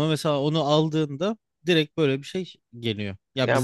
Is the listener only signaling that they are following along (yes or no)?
no